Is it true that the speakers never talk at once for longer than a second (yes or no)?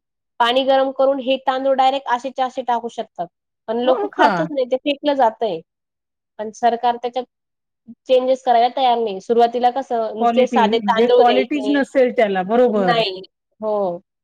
no